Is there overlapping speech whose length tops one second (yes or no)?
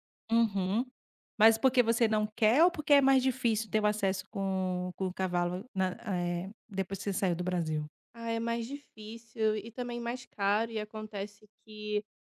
no